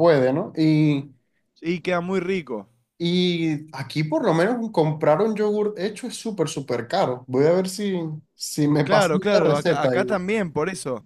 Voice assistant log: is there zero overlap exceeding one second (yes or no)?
no